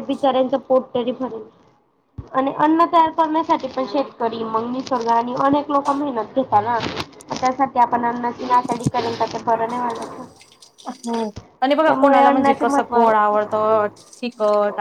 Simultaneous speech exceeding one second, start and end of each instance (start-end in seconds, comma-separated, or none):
11.8-13.5